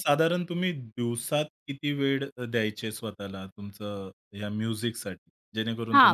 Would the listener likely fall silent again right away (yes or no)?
no